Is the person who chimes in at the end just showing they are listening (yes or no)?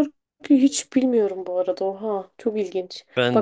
yes